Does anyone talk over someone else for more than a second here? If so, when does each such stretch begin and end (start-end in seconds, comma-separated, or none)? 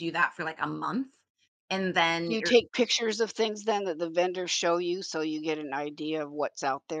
none